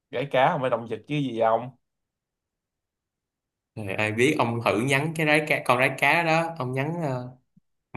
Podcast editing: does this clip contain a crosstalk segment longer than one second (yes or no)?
no